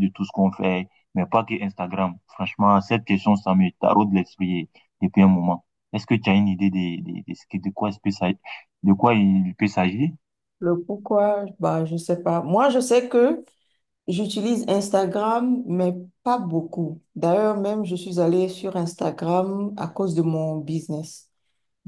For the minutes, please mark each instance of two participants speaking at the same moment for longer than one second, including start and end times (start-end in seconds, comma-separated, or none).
none